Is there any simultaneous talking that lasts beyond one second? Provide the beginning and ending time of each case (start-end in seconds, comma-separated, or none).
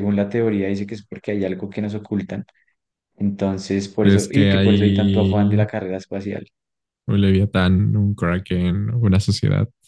4.0-5.7